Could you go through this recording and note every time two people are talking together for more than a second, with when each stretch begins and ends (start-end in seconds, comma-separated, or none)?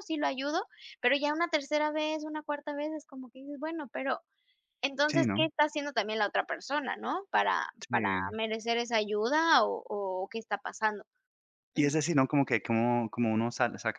none